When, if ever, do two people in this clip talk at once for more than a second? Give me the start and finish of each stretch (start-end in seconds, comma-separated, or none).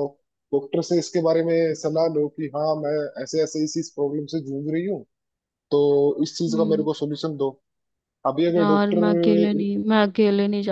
none